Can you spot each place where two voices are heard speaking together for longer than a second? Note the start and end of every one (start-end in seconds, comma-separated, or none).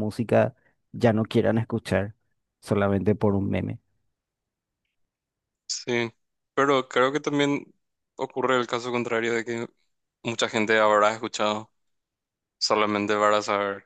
none